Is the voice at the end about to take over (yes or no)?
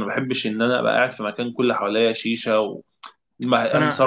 no